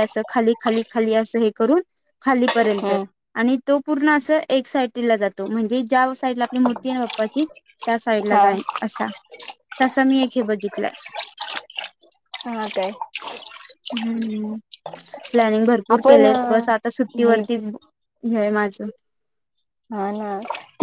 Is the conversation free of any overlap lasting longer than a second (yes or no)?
yes